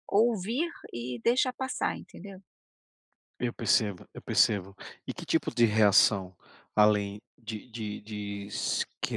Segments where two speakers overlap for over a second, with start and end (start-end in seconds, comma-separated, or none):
none